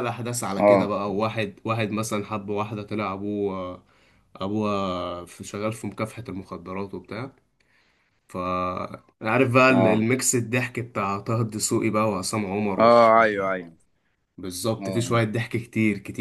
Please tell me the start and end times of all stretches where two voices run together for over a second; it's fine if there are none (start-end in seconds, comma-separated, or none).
none